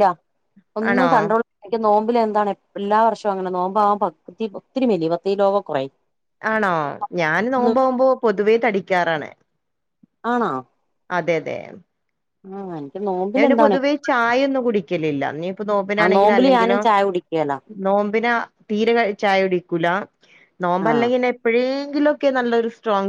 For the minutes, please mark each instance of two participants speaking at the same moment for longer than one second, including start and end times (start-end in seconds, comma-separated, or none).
none